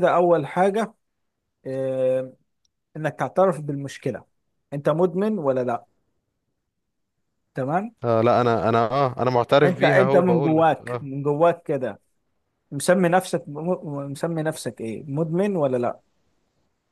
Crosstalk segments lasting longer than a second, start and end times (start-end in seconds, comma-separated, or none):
9.6-11.1